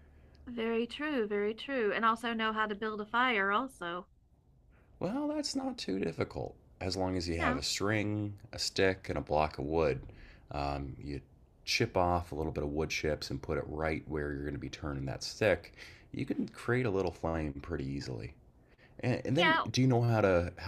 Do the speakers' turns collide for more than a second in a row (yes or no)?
no